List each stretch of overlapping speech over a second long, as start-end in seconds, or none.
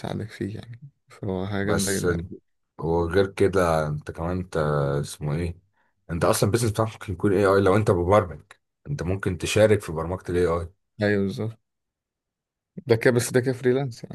none